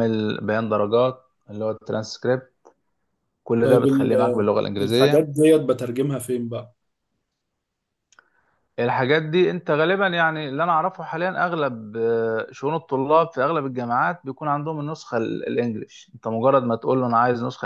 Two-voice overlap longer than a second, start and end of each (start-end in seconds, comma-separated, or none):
3.6-5.3